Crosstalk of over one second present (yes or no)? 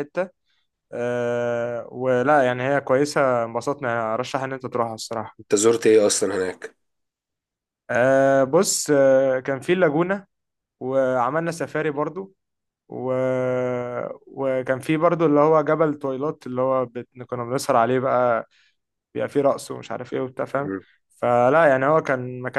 no